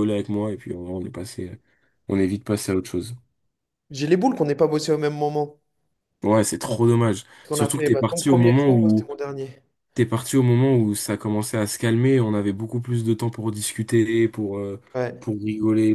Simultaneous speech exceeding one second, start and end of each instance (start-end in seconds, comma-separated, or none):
7.4-9.1